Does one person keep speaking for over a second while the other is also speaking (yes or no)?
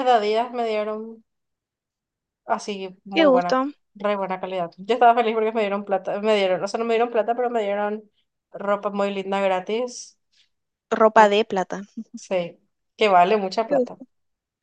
no